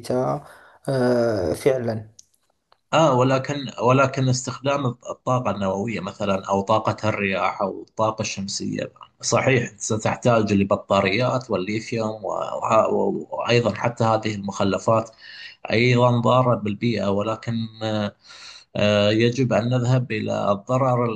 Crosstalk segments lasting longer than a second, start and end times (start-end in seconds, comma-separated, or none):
none